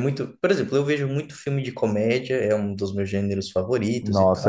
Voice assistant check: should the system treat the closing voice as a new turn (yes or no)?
yes